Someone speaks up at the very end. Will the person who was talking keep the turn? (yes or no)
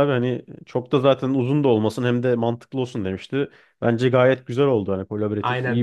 no